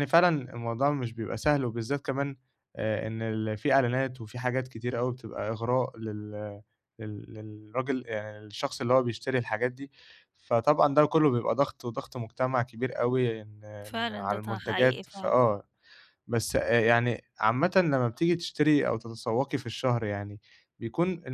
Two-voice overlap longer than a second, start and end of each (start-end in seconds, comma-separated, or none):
13.8-15.4